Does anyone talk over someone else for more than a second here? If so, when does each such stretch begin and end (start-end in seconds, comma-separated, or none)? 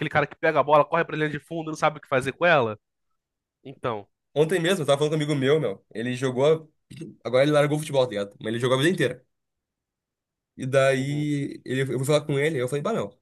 none